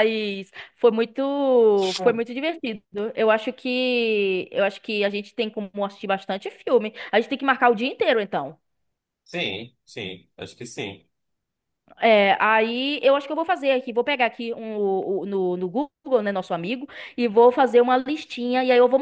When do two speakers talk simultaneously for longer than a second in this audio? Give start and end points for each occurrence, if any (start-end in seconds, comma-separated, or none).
none